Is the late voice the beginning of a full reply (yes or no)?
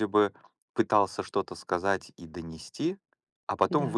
no